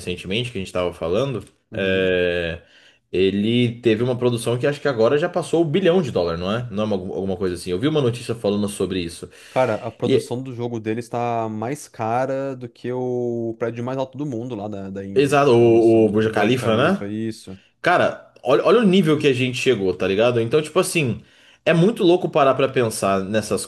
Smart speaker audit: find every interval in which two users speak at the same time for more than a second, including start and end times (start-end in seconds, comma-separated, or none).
15.1-17.1